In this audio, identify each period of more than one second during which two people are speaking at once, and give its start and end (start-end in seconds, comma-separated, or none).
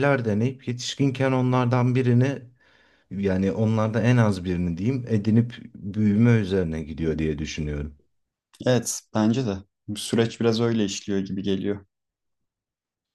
none